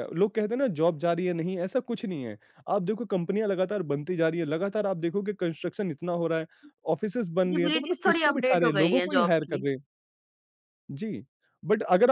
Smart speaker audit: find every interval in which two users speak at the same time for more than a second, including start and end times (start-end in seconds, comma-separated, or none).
7.5-9.7